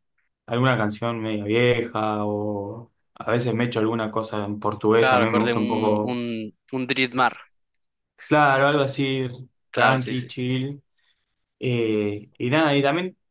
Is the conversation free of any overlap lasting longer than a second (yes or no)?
no